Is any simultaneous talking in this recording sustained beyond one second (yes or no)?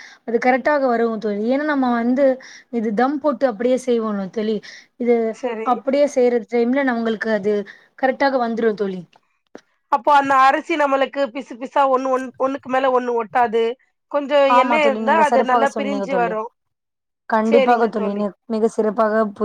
yes